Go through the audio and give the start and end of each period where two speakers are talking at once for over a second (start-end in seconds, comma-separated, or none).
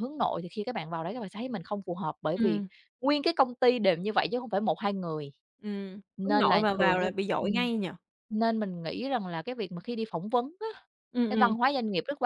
6.2-7.7